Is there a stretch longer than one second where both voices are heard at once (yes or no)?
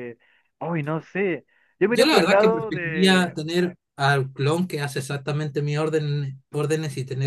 yes